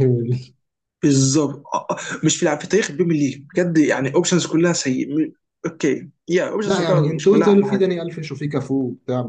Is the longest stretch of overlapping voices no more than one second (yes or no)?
no